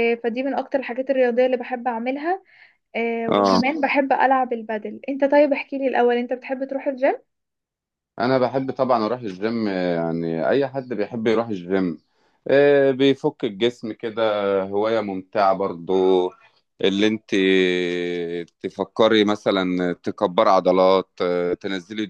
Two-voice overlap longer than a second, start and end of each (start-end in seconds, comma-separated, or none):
none